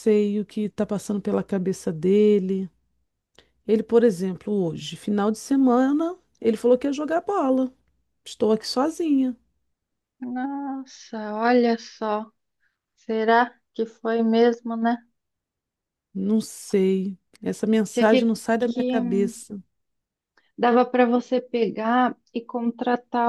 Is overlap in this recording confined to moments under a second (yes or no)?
no